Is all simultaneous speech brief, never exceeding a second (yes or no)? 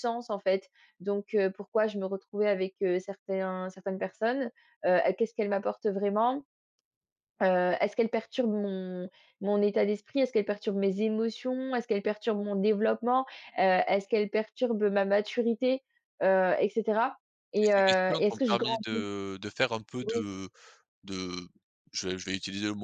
no